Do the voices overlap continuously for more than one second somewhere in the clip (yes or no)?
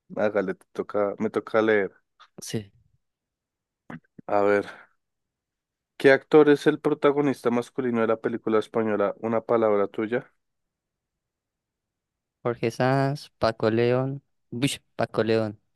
no